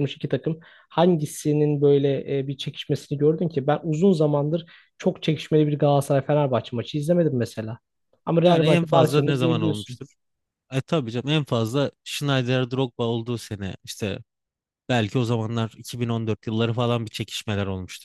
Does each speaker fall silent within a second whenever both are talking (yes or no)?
no